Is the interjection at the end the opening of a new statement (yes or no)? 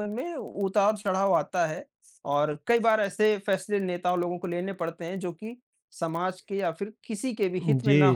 yes